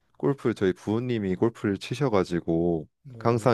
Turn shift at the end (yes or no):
no